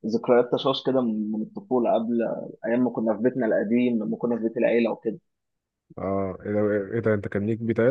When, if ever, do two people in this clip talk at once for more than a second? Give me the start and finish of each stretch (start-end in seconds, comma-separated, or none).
none